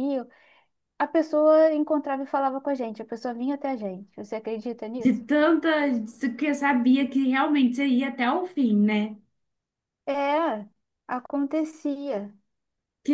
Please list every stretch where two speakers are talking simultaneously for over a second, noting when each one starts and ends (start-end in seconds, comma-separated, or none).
none